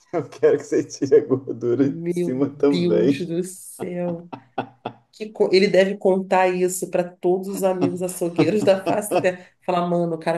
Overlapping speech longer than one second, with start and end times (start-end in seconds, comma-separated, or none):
1.8-3.3